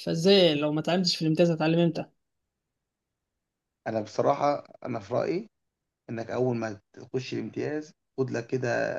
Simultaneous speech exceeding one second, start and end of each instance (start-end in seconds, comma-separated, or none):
none